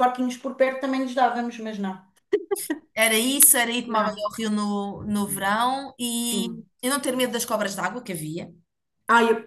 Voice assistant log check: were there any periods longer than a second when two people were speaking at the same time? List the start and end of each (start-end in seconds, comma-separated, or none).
none